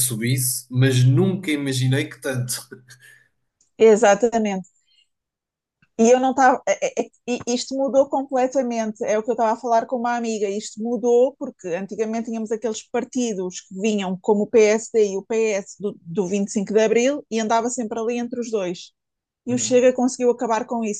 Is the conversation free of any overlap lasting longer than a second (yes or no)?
yes